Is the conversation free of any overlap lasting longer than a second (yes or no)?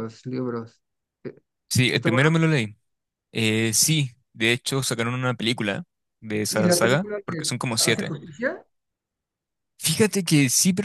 no